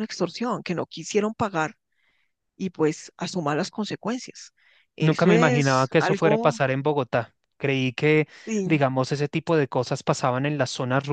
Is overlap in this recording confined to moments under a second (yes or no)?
no